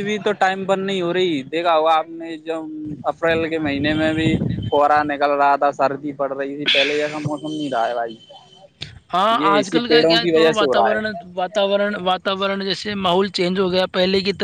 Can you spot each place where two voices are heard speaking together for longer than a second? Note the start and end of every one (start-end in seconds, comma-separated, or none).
9.4-11.2